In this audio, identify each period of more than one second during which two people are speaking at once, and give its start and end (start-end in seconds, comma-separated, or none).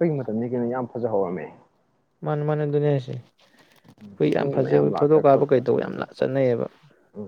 4.4-6.0